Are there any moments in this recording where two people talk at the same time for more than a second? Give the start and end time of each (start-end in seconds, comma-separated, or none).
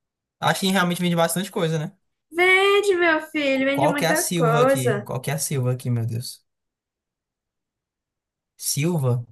3.7-5.1